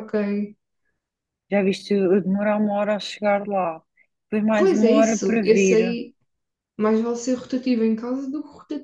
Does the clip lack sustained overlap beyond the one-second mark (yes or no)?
no